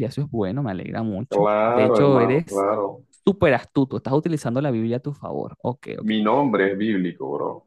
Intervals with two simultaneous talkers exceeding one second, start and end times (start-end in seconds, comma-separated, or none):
1.3-2.6